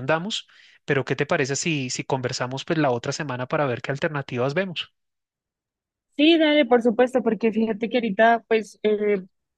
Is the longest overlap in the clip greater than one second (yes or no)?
no